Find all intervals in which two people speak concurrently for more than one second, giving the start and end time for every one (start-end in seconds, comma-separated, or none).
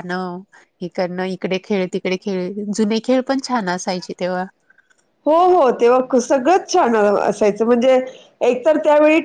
none